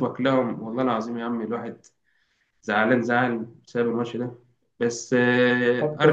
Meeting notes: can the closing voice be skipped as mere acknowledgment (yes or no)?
no